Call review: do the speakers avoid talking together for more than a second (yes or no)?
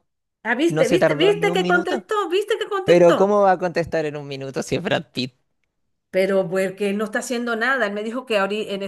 no